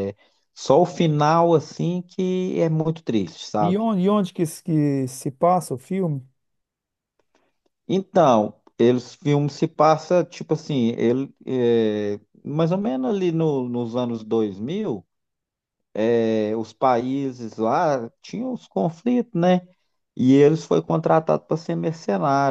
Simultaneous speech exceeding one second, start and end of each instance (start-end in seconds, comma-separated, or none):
none